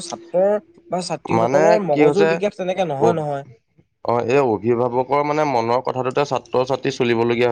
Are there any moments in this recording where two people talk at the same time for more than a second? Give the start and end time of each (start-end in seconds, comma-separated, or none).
1.4-3.3